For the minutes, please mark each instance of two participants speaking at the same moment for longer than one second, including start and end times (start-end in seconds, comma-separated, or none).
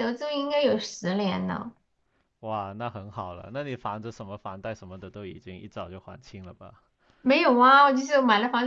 none